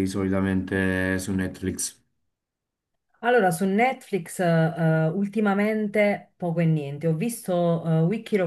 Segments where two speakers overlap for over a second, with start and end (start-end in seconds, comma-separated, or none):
none